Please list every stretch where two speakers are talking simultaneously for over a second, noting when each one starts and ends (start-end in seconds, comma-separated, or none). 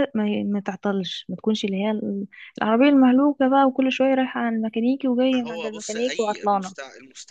5.3-6.8